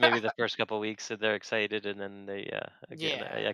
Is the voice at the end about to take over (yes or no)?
yes